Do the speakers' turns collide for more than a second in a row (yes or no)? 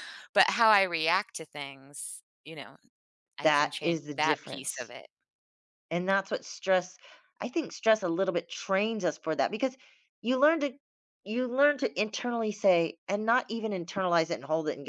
yes